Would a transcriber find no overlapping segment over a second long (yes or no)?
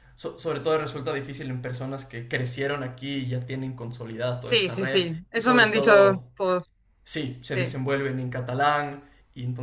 no